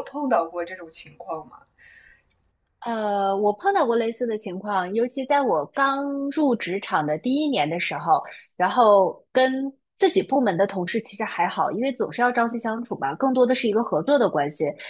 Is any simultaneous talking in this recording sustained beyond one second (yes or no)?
no